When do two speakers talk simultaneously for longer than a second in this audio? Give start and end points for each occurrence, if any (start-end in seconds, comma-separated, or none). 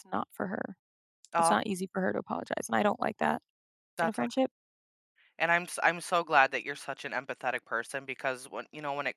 none